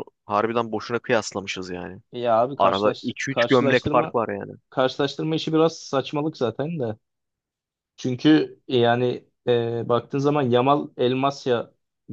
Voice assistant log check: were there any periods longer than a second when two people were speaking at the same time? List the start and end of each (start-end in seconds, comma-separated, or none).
2.6-4.2